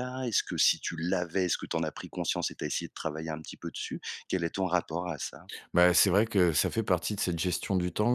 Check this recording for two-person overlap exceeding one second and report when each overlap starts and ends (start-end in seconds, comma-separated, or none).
none